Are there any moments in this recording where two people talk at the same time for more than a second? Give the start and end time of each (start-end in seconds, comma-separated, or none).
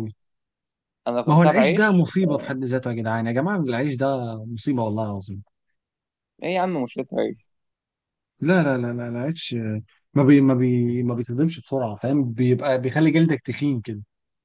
1.2-2.5